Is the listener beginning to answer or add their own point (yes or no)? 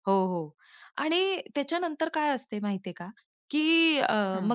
no